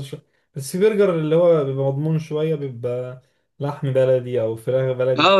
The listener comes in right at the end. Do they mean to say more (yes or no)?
yes